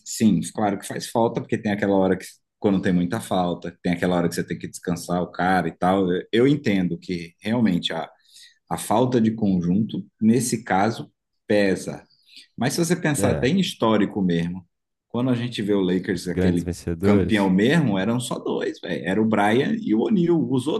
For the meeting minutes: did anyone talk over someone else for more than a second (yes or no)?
yes